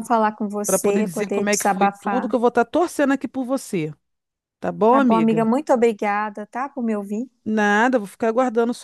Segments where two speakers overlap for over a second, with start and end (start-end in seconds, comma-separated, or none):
0.7-2.3